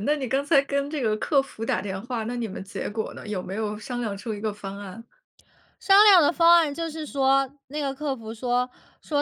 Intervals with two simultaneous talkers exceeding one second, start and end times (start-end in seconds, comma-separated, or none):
none